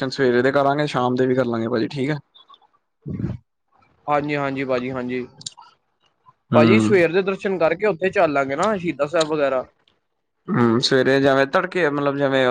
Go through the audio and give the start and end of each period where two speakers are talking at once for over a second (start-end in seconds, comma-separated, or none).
none